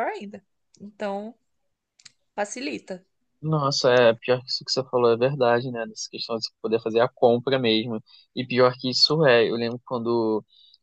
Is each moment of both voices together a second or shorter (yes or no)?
yes